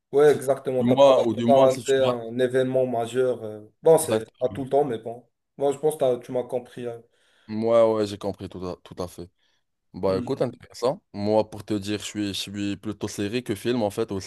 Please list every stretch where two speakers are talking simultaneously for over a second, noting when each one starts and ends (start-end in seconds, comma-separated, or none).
0.8-2.1